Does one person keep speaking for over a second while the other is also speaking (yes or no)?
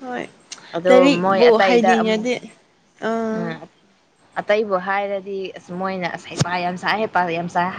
yes